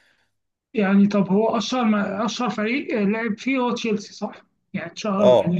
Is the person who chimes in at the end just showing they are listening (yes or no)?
no